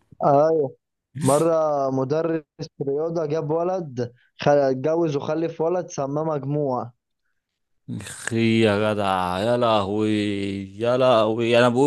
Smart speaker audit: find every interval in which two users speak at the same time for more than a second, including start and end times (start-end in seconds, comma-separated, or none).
none